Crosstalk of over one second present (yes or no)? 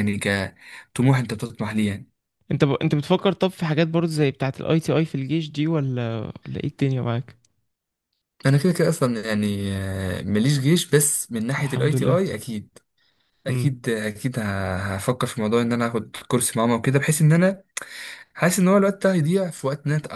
no